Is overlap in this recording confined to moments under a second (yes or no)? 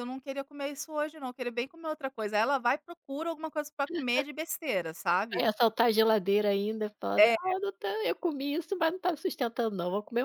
yes